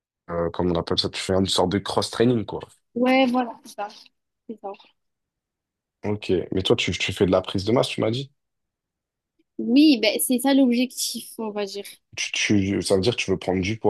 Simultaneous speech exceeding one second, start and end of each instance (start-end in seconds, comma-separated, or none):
none